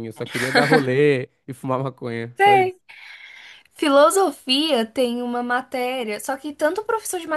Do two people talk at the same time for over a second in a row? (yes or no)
no